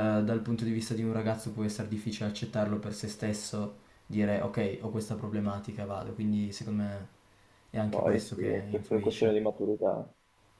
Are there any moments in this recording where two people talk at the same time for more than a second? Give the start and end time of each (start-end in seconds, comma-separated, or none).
7.9-9.5